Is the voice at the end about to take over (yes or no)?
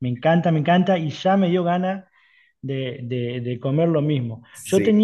no